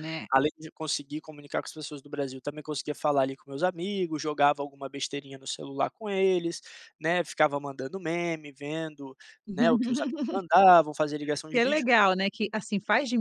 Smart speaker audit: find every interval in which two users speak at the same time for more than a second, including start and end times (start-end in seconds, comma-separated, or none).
none